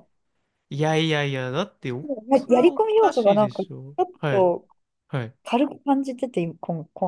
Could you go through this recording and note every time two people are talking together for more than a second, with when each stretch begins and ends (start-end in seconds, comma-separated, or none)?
2.3-4.5